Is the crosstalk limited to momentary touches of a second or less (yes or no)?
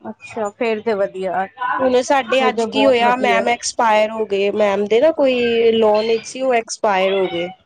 no